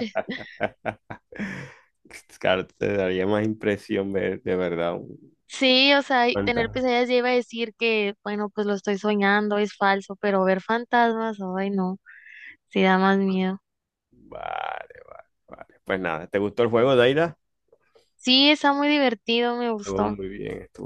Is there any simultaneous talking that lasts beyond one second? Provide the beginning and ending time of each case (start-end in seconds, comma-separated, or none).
none